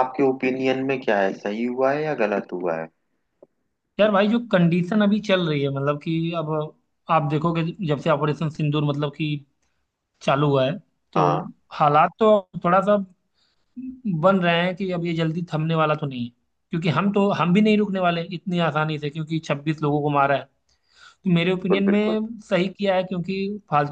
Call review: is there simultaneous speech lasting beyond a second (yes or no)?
no